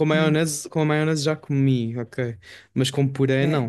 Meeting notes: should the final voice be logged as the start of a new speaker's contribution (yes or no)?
no